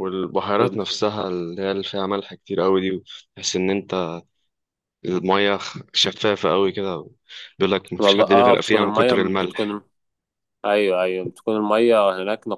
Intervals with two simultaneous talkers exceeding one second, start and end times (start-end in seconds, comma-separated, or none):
8.0-9.7